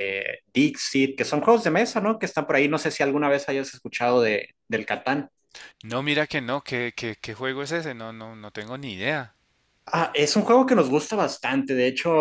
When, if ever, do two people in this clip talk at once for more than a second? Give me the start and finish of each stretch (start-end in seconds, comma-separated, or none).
none